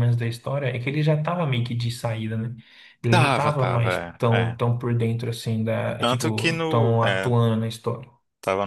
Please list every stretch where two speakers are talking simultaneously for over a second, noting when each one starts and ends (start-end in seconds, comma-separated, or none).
3.1-4.6, 6.0-7.3